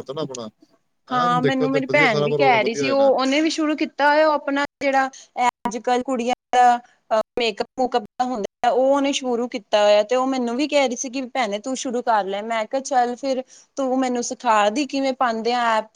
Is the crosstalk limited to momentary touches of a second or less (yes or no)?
no